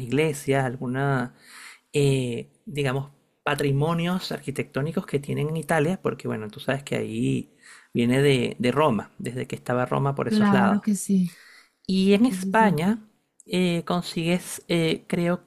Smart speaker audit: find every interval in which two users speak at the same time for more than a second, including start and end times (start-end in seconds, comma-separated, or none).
none